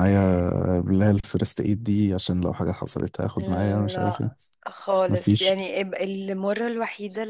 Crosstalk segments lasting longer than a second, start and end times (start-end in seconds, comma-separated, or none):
none